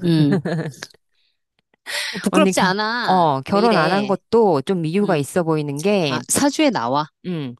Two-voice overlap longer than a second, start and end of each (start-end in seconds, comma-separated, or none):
2.3-4.2